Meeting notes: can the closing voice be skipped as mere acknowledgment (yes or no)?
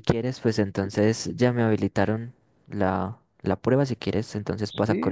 no